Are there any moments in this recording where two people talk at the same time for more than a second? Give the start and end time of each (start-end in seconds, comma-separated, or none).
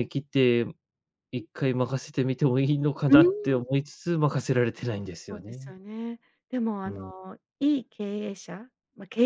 none